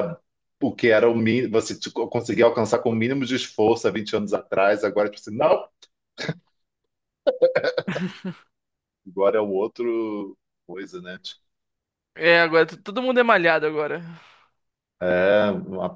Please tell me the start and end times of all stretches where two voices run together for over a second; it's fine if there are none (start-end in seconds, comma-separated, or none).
none